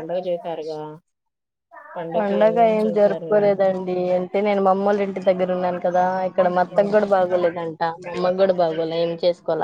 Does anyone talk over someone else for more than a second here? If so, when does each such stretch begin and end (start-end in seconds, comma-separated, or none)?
none